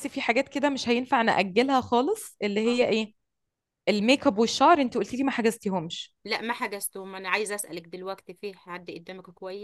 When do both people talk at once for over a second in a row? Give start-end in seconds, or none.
none